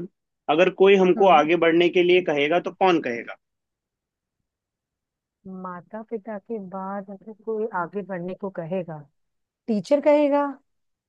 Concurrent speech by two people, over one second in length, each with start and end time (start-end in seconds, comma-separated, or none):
none